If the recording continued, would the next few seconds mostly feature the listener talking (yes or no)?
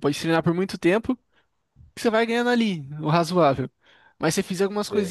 no